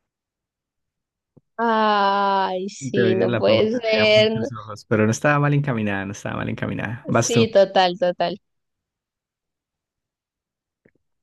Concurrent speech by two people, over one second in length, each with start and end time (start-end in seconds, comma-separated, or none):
2.8-4.5